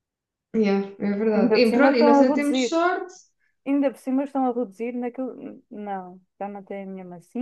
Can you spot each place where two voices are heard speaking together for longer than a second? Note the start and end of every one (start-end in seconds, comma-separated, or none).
1.3-2.8